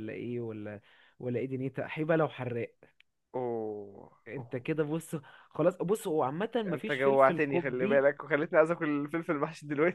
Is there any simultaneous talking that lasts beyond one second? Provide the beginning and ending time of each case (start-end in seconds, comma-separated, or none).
6.7-8.1